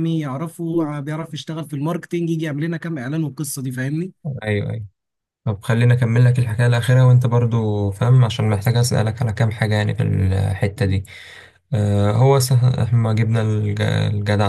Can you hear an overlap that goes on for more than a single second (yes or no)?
no